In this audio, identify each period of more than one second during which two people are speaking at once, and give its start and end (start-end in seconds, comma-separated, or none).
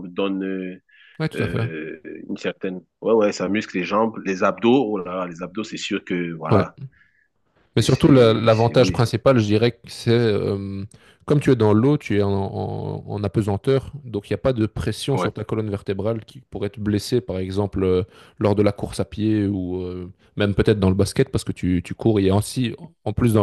7.8-9.1